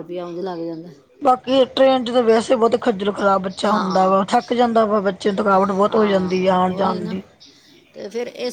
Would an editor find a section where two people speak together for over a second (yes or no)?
yes